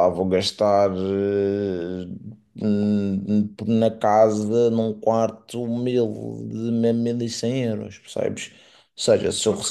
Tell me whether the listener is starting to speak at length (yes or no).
no